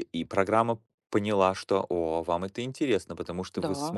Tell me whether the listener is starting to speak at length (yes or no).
no